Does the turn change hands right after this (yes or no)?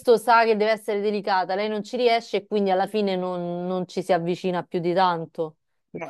yes